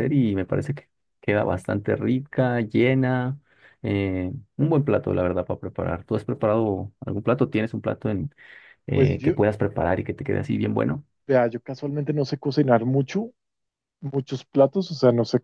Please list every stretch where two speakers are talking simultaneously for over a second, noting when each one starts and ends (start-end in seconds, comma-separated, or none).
none